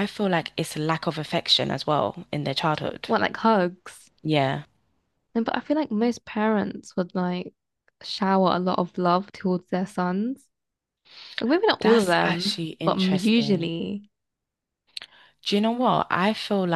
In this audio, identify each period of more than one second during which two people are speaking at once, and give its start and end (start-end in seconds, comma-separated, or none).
11.8-13.7